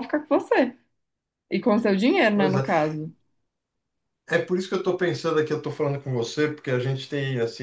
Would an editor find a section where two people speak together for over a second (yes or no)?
no